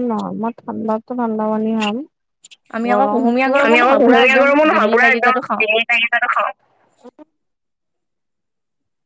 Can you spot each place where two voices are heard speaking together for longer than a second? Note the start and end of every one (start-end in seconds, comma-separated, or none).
2.9-5.6